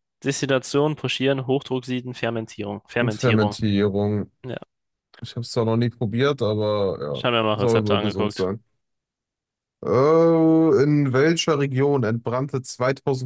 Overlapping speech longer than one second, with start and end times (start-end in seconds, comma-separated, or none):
7.1-8.4